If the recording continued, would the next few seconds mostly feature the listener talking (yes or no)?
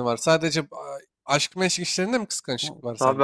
yes